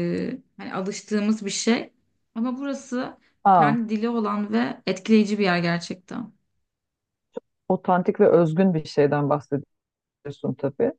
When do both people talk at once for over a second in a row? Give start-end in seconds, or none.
none